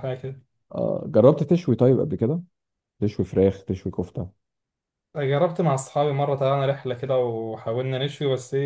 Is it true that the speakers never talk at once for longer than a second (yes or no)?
yes